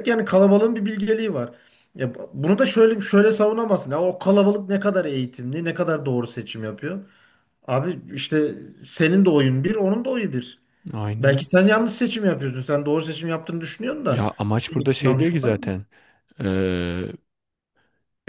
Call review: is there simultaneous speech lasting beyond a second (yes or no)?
yes